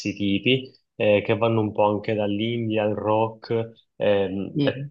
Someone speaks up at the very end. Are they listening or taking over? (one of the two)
listening